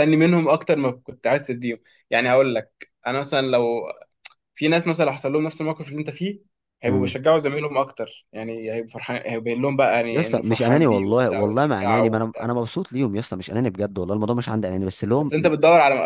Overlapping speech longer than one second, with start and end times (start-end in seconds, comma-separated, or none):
10.1-12.5